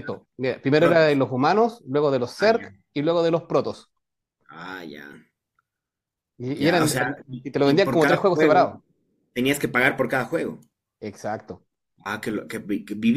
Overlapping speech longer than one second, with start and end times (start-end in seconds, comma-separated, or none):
6.5-8.7